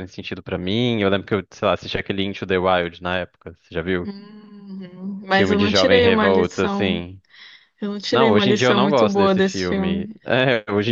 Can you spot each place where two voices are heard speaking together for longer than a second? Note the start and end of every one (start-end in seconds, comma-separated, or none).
5.3-7.0, 8.1-10.1